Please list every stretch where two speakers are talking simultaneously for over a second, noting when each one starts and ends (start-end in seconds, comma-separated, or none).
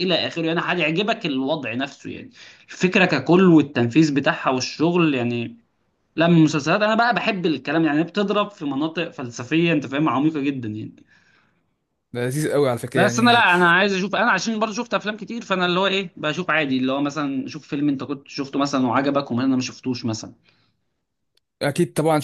none